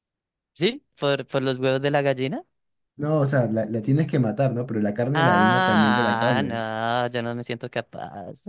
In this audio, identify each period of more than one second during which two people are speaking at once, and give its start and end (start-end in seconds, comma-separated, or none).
5.1-6.8